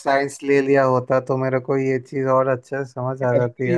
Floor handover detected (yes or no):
yes